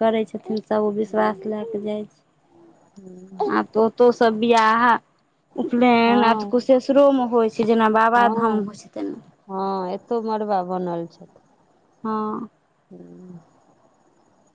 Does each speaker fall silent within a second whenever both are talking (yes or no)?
yes